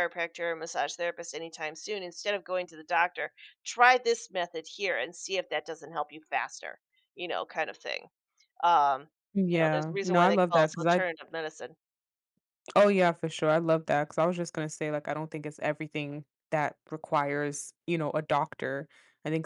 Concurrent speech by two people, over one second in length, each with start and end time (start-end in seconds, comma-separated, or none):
9.5-11.0